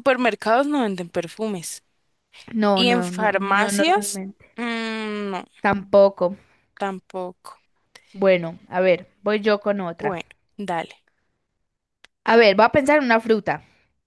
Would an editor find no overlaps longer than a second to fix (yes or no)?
no